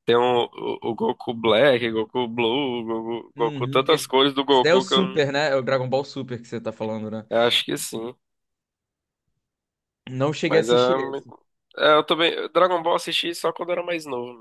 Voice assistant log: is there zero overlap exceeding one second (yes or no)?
no